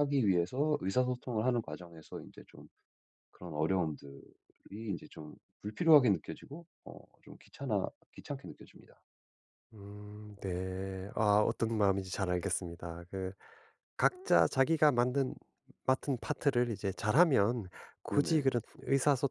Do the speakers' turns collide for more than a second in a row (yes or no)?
no